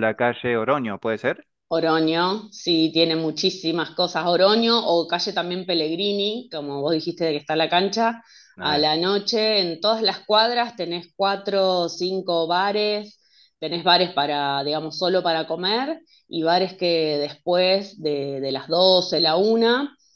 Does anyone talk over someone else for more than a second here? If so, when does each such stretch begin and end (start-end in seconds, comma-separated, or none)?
none